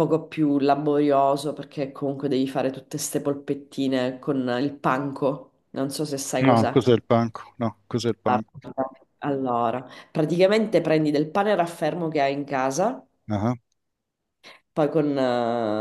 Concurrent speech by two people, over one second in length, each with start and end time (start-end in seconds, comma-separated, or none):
none